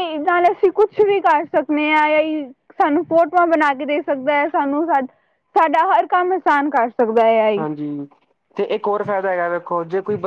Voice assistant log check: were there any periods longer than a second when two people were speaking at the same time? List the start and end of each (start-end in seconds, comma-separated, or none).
none